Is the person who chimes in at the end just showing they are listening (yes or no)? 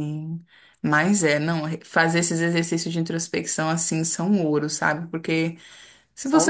yes